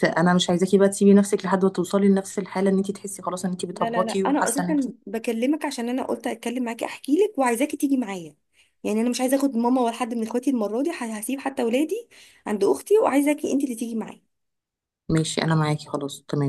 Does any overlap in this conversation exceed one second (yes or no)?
yes